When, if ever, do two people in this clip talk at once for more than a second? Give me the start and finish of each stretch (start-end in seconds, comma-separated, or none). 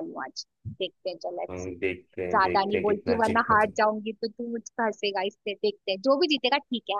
2.3-3.8